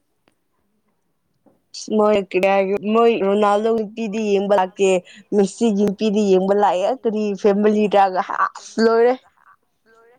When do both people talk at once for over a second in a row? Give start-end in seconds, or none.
7.1-9.2